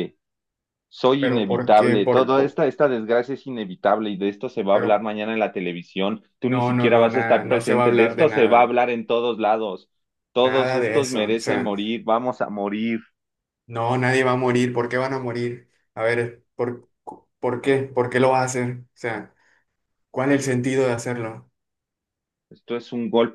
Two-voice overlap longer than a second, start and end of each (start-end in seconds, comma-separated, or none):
1.2-2.6, 6.4-8.8, 10.4-11.7